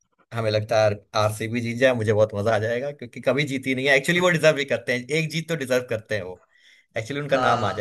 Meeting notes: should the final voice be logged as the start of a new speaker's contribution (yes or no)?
no